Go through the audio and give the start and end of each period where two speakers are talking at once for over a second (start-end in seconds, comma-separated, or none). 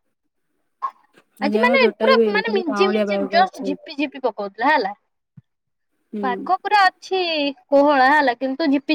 1.6-3.8